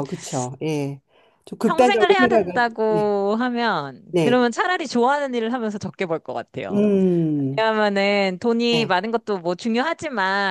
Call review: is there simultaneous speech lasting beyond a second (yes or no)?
yes